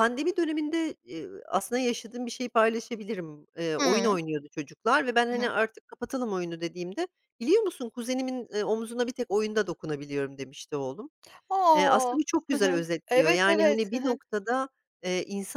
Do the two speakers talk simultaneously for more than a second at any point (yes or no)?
yes